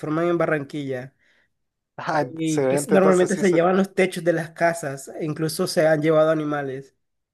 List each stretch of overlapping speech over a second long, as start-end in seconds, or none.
2.3-3.6